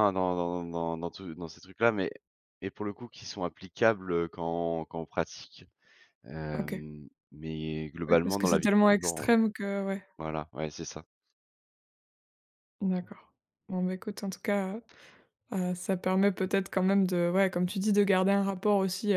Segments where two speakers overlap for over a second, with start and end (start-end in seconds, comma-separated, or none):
8.1-9.3